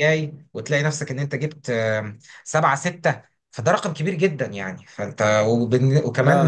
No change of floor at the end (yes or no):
yes